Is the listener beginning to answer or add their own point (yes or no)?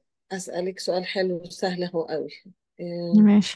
no